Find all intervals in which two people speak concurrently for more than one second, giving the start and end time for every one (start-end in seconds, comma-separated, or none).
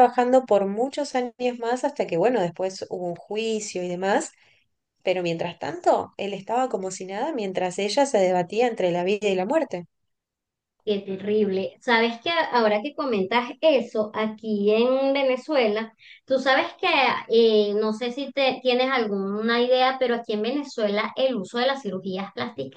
none